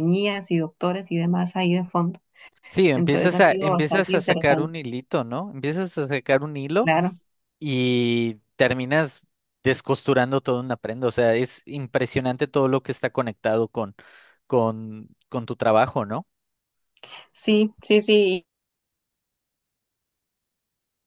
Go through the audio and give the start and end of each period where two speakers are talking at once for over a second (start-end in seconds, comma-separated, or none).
2.9-4.7